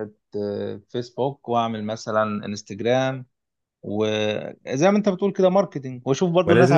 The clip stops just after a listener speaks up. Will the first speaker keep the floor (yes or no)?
no